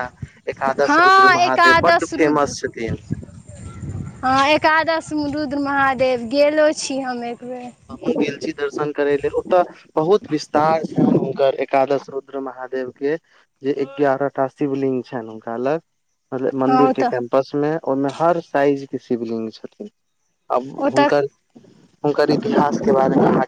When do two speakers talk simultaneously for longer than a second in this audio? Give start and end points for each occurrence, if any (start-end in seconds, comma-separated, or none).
none